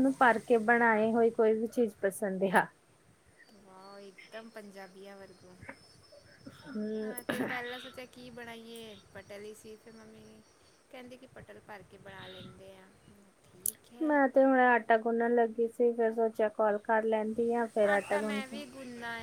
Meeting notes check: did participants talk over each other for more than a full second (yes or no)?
no